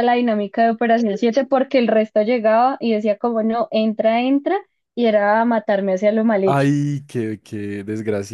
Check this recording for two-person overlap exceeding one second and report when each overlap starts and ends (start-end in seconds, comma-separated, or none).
none